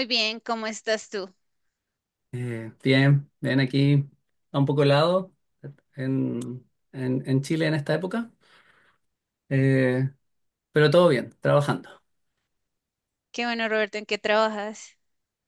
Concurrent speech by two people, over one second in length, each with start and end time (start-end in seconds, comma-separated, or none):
none